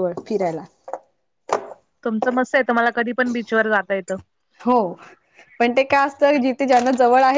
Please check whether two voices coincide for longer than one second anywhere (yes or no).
no